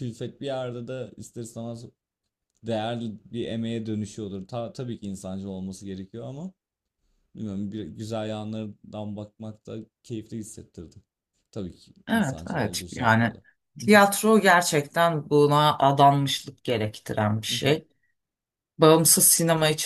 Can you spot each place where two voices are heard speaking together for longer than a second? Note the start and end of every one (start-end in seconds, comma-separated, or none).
12.1-13.3